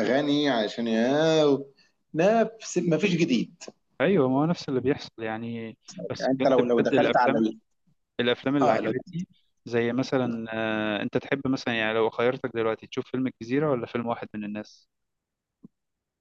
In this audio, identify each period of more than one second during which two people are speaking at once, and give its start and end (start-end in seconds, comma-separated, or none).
6.2-7.5